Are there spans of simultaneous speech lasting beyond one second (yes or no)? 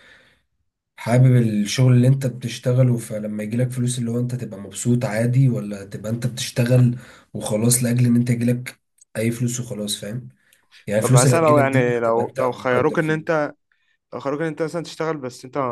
yes